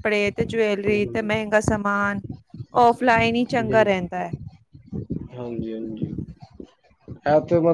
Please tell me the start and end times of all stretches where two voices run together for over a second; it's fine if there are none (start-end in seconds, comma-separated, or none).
none